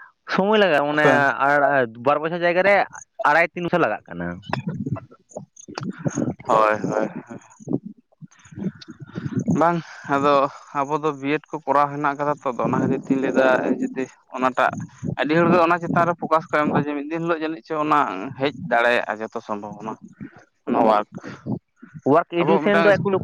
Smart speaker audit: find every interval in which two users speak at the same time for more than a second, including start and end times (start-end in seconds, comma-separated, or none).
none